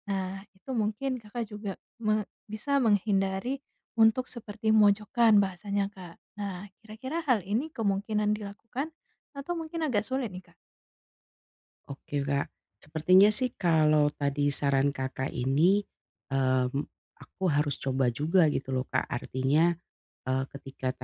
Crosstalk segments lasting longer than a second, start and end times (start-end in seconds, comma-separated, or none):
none